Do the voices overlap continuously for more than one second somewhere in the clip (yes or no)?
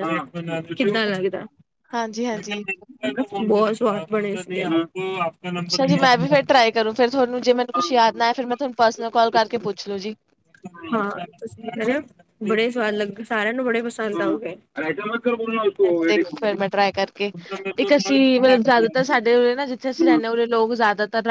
no